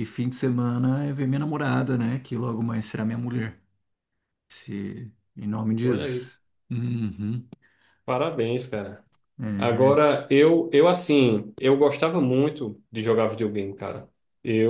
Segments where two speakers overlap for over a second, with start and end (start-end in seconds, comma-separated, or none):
none